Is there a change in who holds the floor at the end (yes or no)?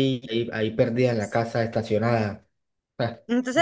yes